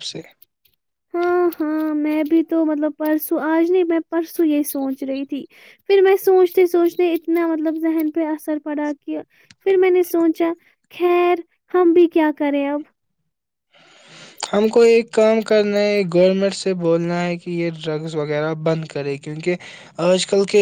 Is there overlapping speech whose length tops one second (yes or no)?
no